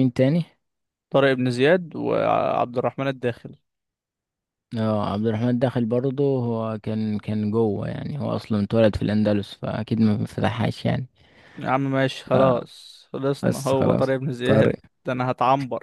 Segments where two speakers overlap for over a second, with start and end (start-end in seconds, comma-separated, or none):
13.4-14.8